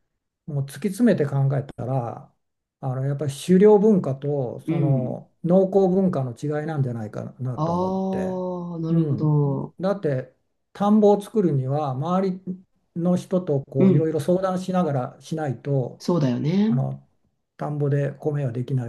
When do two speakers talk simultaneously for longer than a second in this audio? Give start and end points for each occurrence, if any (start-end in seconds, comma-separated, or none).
none